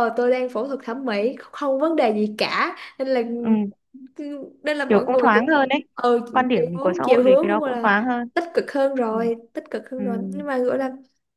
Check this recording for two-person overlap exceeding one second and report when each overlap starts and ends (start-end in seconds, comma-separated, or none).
6.3-7.9